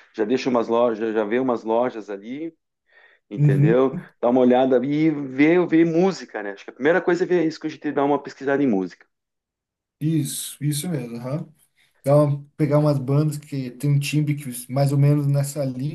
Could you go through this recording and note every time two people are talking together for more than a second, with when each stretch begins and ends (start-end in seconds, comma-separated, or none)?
none